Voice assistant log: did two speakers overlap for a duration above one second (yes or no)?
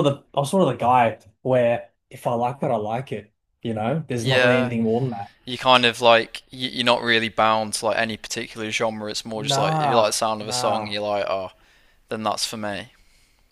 yes